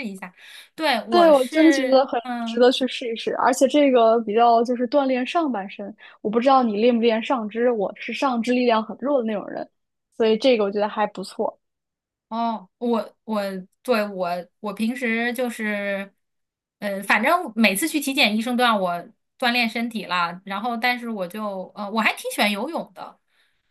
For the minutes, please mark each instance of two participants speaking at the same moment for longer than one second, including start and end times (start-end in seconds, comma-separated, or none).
1.1-2.7